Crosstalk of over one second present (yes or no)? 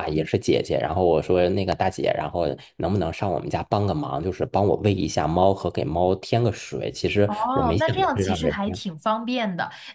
yes